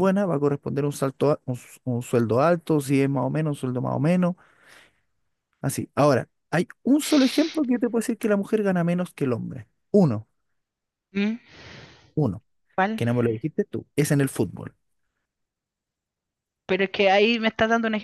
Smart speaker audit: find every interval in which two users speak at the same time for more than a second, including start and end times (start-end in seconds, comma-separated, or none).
none